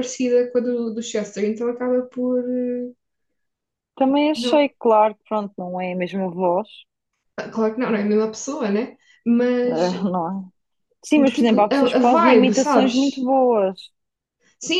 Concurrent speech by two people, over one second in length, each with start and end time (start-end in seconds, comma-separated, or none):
11.3-13.3